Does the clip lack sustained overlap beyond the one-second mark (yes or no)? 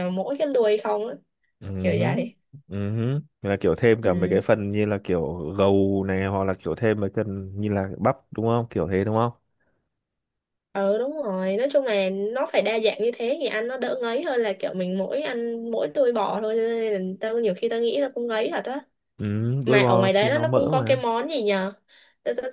no